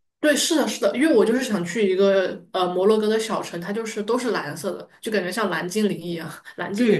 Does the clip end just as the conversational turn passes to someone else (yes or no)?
yes